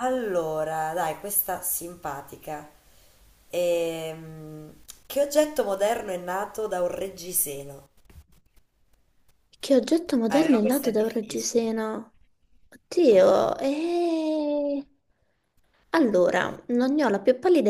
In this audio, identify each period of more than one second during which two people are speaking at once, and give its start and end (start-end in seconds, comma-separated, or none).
10.3-11.7